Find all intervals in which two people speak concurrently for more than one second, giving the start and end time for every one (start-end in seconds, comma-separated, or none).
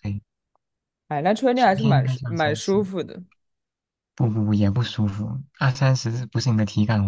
1.5-2.8